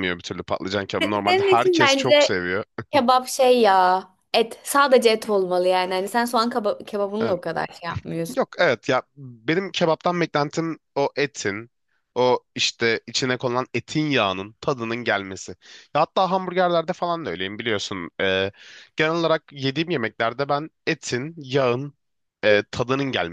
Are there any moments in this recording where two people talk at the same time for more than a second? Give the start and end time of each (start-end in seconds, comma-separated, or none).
1.0-2.4